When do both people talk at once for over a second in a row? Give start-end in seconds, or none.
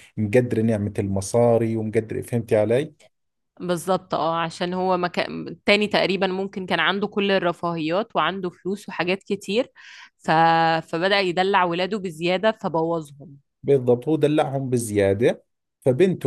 none